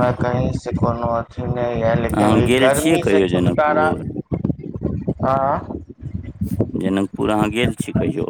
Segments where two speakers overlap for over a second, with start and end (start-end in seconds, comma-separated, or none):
2.2-3.9